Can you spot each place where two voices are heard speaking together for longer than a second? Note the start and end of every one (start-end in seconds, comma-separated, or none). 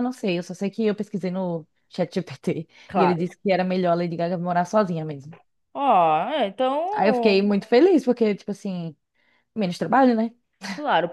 none